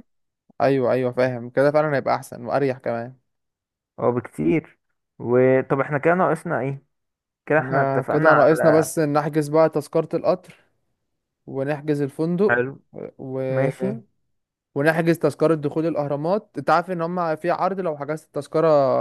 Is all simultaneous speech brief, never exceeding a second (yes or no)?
no